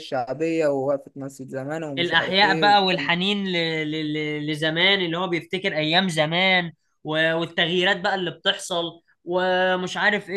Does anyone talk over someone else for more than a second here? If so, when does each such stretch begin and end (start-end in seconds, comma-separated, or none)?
2.0-3.2